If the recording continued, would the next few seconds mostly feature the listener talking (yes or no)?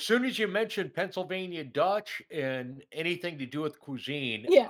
no